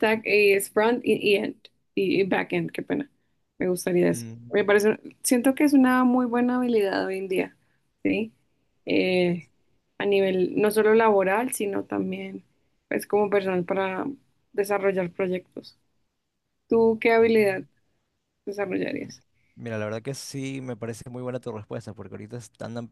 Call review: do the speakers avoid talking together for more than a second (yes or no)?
yes